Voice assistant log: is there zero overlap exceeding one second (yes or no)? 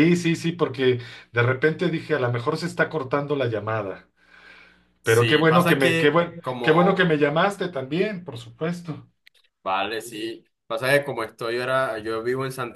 no